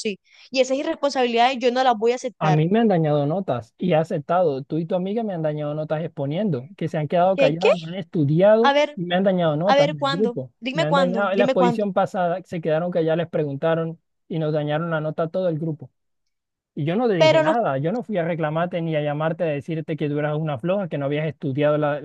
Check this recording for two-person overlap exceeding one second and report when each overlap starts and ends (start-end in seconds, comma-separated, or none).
9.6-11.8